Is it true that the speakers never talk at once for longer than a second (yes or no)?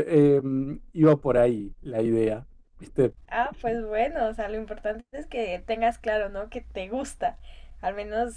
yes